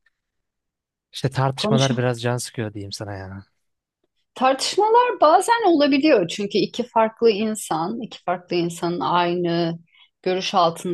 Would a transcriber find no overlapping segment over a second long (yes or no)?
yes